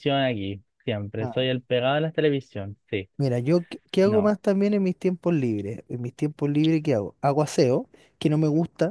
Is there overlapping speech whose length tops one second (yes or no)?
no